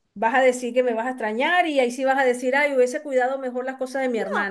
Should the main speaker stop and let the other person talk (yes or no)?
yes